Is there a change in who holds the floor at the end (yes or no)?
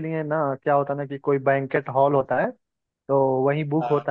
no